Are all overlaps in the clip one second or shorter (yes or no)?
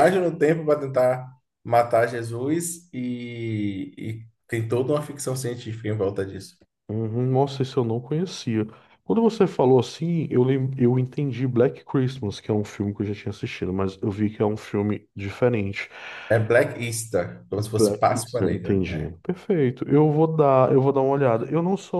no